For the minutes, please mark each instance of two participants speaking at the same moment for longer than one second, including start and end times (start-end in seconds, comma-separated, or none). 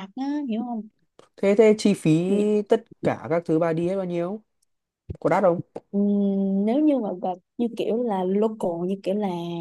none